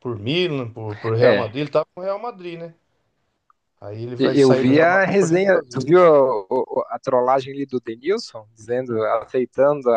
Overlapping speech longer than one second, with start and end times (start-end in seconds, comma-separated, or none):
4.2-5.9